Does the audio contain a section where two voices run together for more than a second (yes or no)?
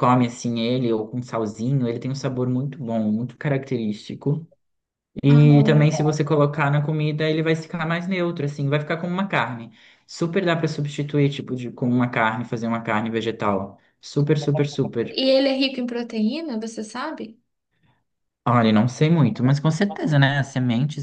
no